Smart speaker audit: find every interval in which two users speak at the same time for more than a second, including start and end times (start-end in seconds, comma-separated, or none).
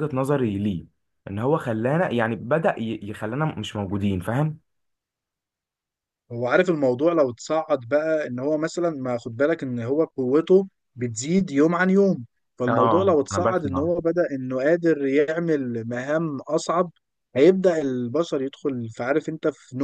12.7-13.9